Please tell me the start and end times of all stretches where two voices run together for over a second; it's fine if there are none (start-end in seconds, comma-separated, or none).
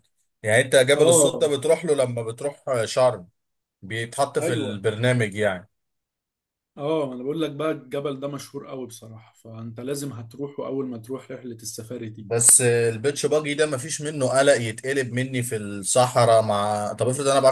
none